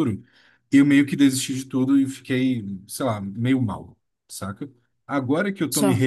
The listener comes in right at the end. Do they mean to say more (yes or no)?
no